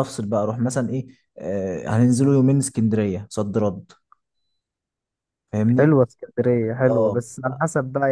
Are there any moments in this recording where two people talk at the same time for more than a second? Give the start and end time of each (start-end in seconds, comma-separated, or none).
none